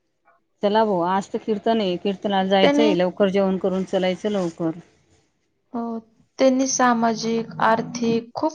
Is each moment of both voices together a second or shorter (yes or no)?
yes